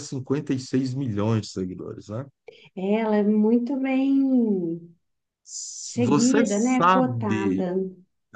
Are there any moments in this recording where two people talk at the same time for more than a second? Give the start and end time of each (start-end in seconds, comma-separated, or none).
5.8-7.7